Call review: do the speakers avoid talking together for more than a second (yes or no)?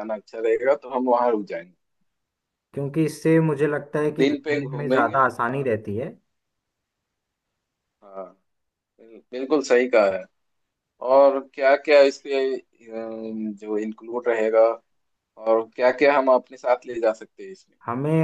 no